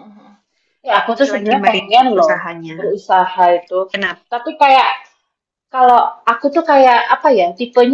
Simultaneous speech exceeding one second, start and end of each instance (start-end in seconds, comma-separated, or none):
1.1-3.0